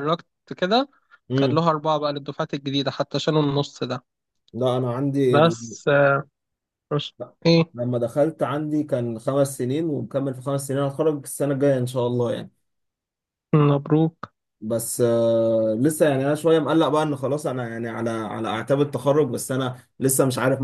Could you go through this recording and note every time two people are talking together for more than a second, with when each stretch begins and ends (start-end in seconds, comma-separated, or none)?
none